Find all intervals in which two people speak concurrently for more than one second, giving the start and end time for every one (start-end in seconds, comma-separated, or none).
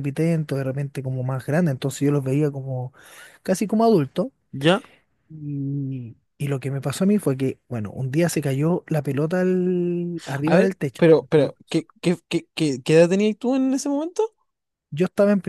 none